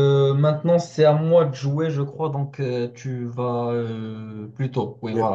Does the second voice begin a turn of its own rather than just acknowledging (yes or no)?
no